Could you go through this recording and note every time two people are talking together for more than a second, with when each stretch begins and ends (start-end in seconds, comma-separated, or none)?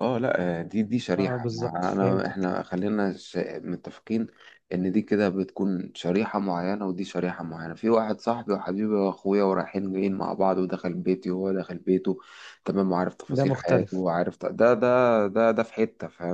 1.2-2.5